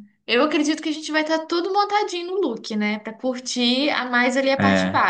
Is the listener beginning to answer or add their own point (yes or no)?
no